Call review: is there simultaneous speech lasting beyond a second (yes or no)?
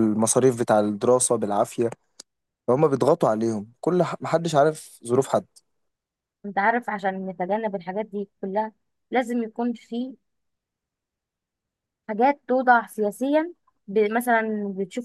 no